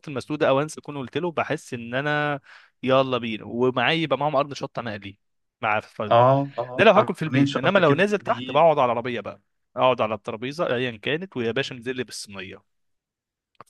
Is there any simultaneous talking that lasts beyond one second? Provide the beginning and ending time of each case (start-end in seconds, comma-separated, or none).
6.8-8.6